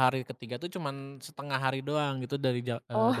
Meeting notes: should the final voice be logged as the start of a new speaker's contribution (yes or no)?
no